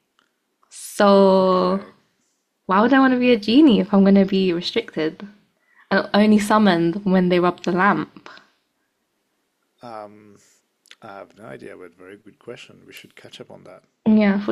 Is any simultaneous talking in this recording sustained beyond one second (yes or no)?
no